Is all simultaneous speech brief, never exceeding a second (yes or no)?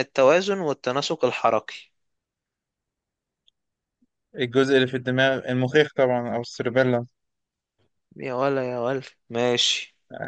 yes